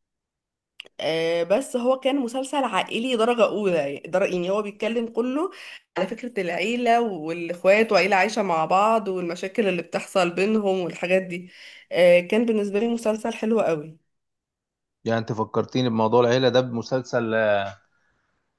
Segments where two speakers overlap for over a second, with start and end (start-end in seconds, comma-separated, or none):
none